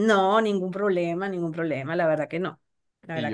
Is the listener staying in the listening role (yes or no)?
no